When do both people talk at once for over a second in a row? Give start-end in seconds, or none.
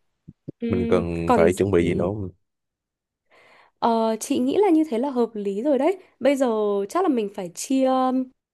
0.7-2.1